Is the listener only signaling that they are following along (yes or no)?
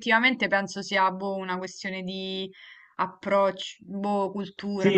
no